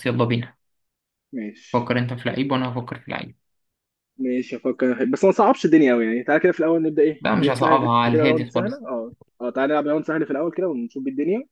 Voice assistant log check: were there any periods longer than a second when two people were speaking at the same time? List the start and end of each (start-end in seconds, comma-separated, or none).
7.2-8.8